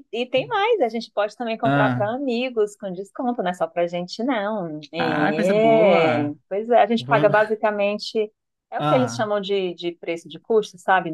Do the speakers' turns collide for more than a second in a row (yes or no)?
yes